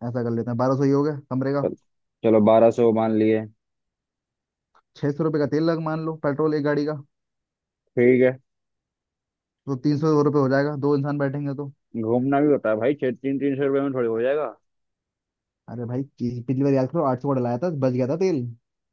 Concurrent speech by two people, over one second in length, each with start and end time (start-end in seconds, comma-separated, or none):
none